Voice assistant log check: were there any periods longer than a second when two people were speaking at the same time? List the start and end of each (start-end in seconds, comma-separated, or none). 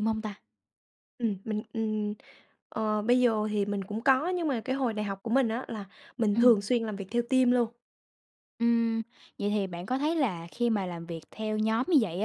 none